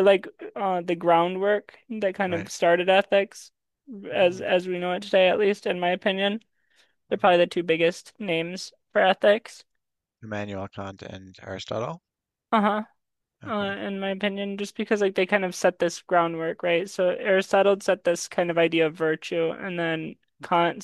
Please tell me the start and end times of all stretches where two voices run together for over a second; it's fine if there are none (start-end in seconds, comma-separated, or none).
none